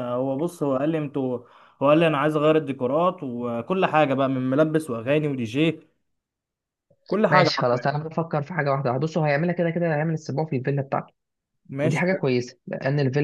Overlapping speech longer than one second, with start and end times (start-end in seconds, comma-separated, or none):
none